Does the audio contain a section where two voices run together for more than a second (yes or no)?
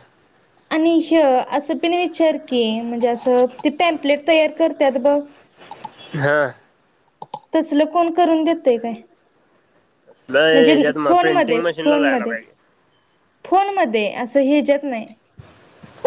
yes